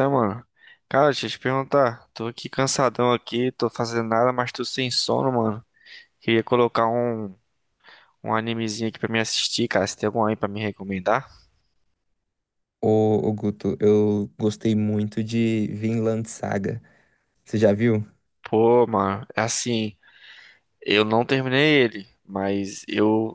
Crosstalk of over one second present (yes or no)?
no